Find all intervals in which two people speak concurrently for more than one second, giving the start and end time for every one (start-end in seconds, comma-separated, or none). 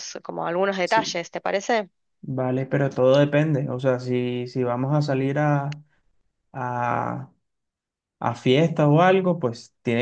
none